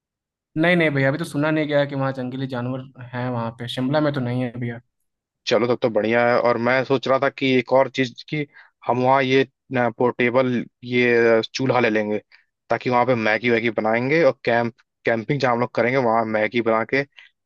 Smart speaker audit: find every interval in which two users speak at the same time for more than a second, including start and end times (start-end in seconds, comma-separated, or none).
none